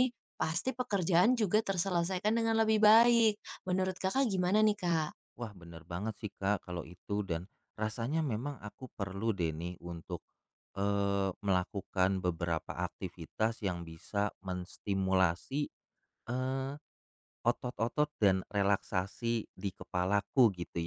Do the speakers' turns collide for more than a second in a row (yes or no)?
no